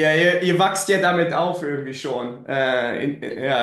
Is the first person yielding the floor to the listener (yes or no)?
no